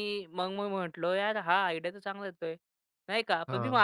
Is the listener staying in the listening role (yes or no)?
yes